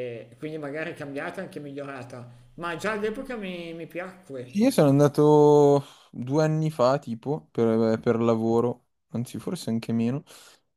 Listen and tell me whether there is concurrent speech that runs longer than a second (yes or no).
no